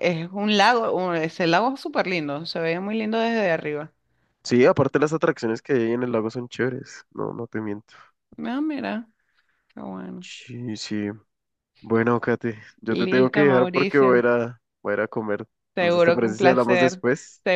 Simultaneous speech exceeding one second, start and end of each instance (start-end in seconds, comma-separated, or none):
13.0-14.2, 15.8-17.0